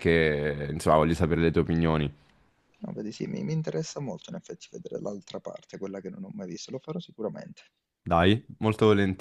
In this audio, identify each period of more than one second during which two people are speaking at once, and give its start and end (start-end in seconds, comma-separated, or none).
none